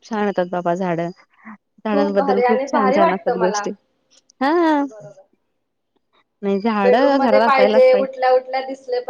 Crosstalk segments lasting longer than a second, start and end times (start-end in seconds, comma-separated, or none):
1.9-3.7